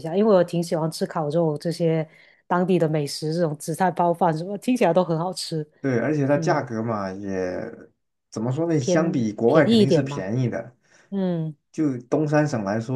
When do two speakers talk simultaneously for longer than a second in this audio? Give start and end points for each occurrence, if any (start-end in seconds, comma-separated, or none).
8.8-10.2